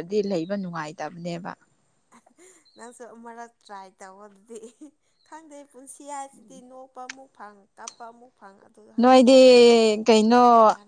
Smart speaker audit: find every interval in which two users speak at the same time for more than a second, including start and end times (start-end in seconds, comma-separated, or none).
none